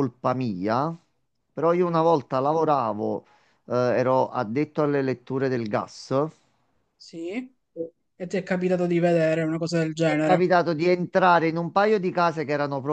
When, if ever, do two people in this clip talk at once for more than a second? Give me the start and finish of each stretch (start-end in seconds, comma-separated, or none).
none